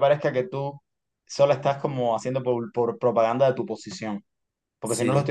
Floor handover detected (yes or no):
no